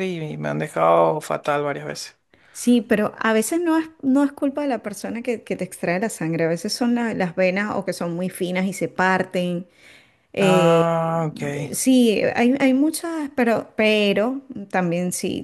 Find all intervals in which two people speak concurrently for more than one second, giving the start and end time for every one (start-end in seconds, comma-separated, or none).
10.4-11.7